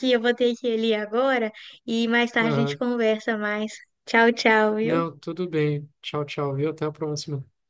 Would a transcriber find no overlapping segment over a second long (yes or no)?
yes